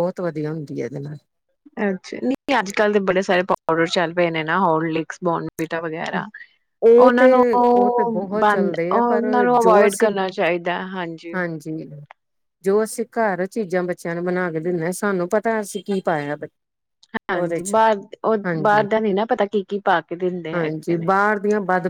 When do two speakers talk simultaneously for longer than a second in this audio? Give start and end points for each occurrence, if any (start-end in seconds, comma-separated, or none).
8.4-10.1